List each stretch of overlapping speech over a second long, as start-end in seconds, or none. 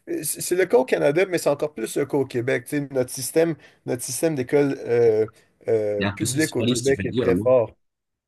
6.0-7.5